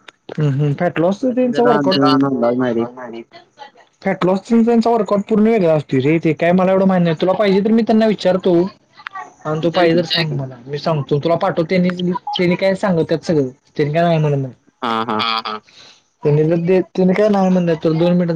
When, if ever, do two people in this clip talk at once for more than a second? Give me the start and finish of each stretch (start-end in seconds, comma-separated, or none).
1.3-2.8